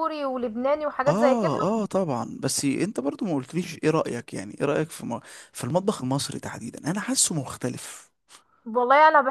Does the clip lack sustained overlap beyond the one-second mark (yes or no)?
yes